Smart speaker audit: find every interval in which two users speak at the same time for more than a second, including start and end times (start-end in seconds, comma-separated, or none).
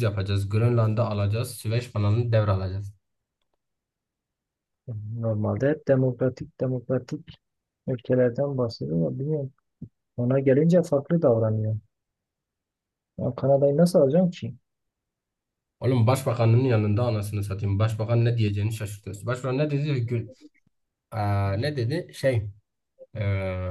none